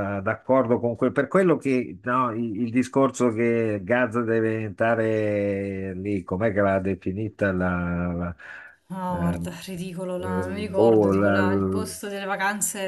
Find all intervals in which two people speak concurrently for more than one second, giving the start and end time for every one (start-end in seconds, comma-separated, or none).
10.2-11.9